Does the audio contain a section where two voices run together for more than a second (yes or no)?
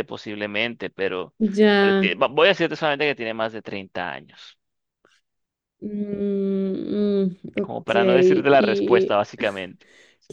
yes